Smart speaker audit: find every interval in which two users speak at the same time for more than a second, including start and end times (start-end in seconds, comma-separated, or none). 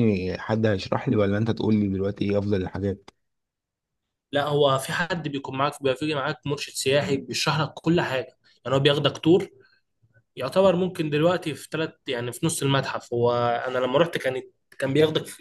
none